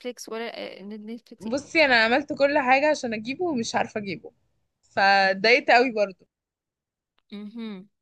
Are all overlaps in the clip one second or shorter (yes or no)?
yes